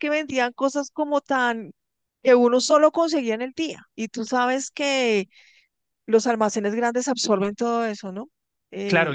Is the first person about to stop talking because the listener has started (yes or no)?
yes